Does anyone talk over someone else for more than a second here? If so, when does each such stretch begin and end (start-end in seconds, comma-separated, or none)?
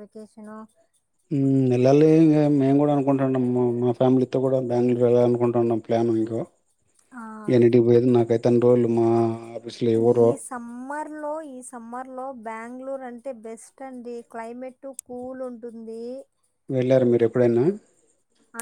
none